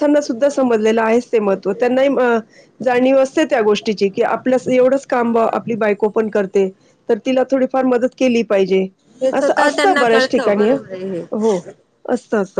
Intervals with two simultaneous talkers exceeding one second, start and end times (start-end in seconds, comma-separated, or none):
9.4-11.2